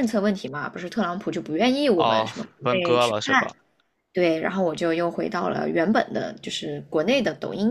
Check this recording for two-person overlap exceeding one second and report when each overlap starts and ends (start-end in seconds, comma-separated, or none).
1.9-3.5